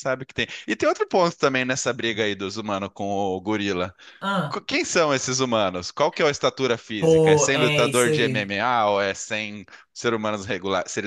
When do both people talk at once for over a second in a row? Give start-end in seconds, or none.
7.0-8.5